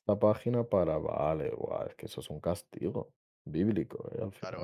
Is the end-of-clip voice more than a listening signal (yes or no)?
yes